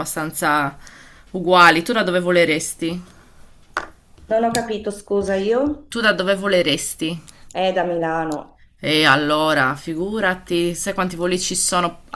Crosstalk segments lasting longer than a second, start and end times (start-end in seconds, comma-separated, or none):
none